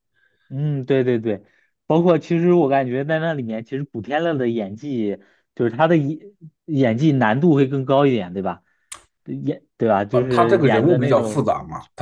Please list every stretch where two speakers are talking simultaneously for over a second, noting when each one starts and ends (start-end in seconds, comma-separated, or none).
10.1-11.4